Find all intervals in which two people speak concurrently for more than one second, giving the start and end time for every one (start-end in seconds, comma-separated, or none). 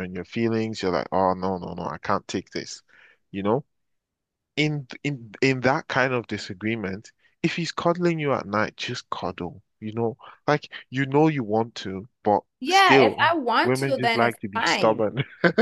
12.6-15.0